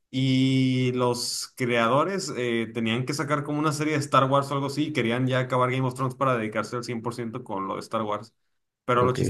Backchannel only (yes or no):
yes